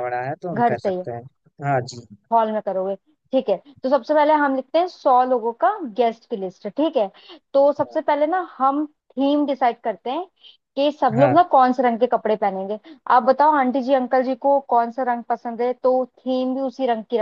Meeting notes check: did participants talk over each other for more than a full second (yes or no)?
no